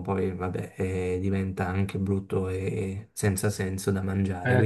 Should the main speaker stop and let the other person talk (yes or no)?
yes